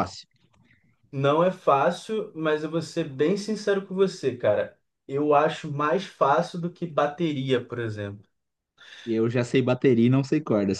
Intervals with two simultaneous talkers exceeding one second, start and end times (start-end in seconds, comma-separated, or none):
none